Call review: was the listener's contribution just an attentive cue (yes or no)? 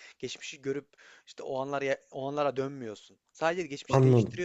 yes